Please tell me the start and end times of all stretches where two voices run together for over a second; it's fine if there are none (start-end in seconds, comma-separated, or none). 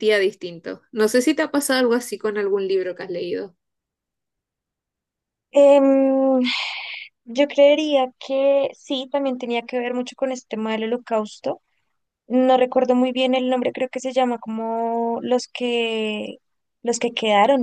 none